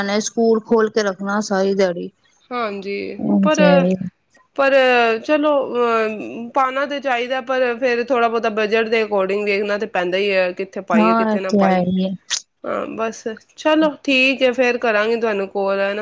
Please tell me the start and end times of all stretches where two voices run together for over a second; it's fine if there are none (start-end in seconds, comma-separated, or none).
none